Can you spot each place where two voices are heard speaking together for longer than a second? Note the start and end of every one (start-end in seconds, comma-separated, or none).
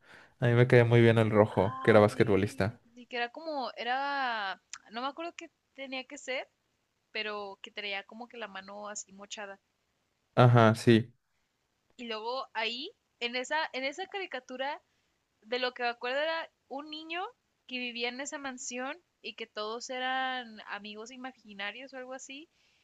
1.5-2.8